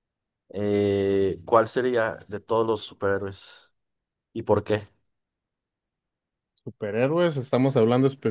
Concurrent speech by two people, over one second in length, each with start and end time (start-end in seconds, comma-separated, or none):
none